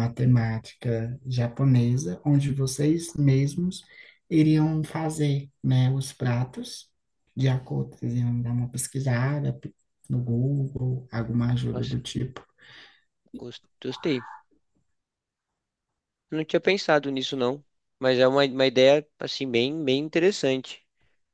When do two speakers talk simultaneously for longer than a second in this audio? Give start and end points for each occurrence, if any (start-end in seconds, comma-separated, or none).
none